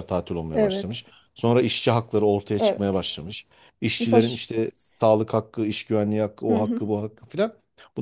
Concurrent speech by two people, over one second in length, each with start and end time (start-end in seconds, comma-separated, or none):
none